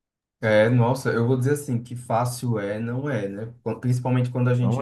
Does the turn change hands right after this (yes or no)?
no